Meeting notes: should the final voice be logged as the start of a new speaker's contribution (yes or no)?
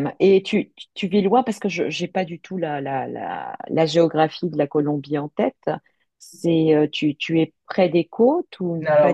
yes